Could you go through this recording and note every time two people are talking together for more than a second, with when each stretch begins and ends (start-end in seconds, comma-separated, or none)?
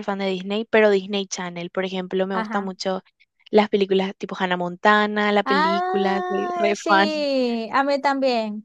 5.4-7.1